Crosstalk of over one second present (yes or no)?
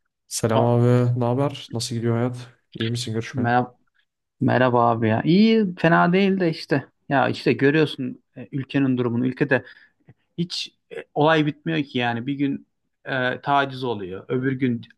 no